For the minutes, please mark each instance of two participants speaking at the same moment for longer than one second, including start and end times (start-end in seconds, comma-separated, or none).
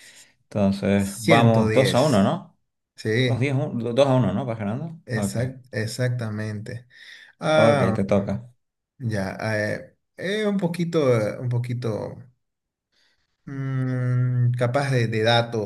0.9-2.4